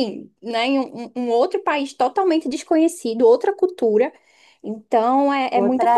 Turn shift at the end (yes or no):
yes